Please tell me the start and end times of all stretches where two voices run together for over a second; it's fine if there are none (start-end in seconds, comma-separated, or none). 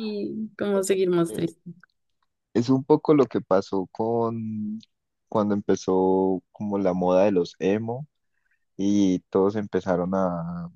none